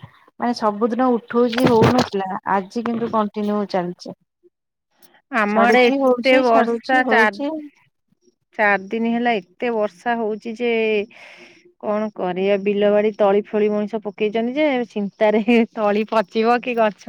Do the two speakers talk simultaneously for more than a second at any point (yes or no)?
yes